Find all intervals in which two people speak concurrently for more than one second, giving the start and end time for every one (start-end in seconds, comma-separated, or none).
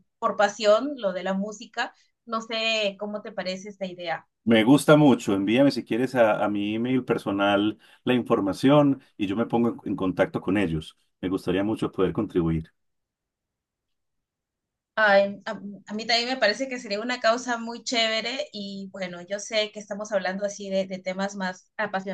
none